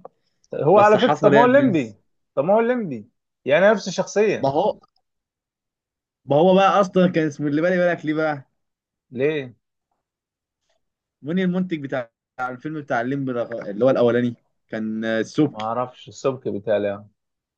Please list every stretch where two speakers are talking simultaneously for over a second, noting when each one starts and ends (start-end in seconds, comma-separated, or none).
0.7-1.9